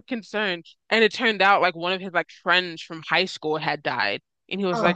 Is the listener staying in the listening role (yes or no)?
yes